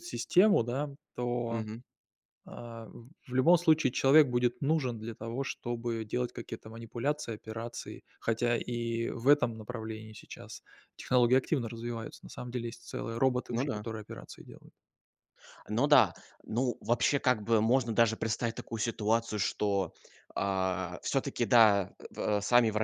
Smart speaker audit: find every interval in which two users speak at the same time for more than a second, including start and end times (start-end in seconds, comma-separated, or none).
none